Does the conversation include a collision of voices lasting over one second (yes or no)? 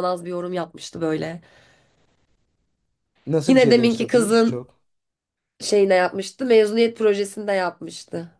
yes